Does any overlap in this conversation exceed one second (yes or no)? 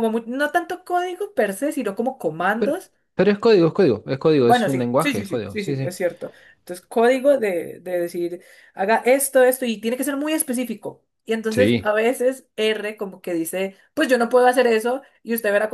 yes